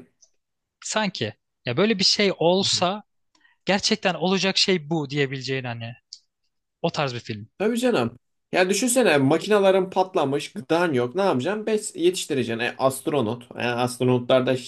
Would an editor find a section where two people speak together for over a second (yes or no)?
no